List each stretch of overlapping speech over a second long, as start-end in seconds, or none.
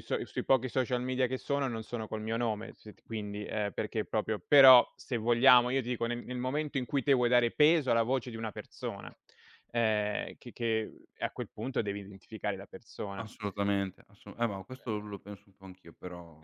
none